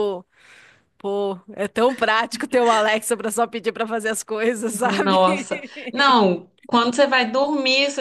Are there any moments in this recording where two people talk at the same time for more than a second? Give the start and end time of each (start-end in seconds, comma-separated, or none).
none